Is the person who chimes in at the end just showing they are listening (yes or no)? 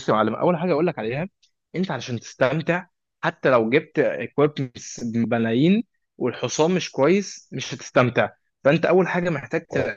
yes